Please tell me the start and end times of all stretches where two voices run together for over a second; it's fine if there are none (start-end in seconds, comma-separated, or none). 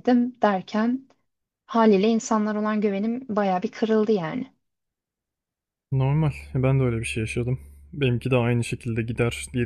none